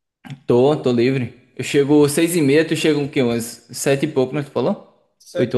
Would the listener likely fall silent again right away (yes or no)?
no